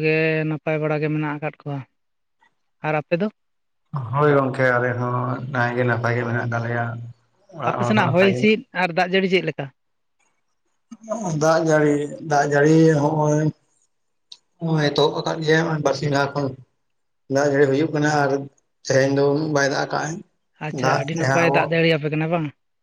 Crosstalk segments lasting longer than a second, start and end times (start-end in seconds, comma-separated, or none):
none